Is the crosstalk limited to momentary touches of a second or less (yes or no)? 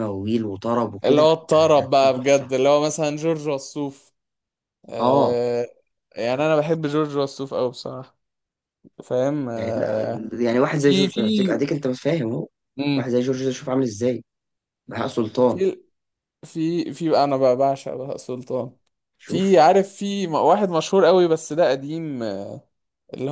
no